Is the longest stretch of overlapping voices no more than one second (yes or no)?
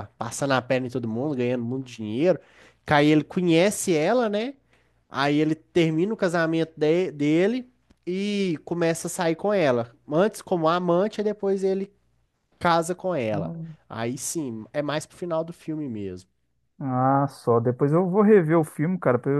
yes